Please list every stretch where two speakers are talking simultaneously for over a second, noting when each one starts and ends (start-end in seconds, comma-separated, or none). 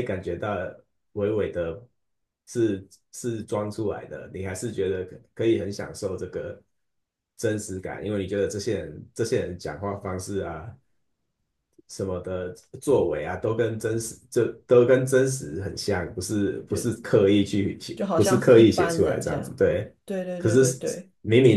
17.9-19.6